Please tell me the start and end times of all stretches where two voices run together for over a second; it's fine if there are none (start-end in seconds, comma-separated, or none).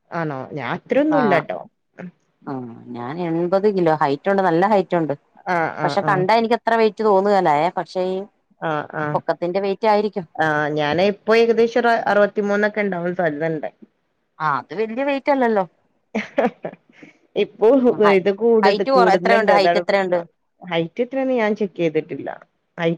18.6-20.2